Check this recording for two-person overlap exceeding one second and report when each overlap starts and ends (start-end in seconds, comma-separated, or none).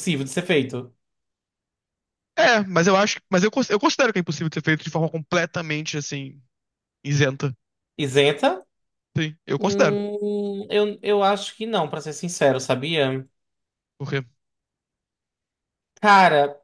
none